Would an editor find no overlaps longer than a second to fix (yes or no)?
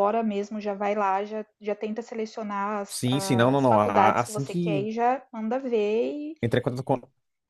no